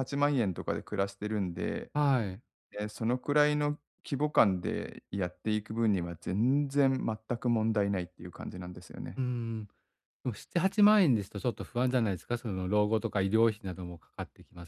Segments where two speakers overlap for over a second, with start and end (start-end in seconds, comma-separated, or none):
none